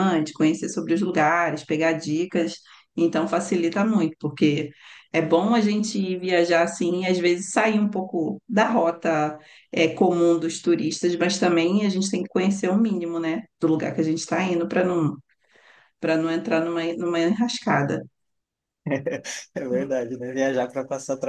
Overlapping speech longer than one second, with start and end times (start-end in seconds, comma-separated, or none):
none